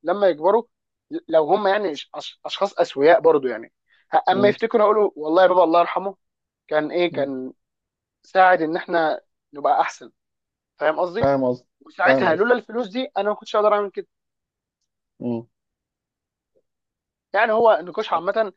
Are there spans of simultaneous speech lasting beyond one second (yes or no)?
no